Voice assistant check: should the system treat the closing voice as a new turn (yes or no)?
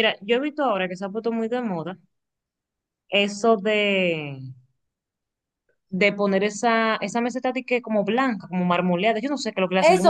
yes